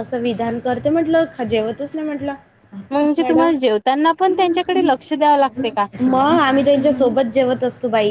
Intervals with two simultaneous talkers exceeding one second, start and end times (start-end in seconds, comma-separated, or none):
none